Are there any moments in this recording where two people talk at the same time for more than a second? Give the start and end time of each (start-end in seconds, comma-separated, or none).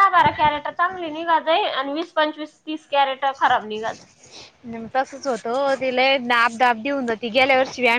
none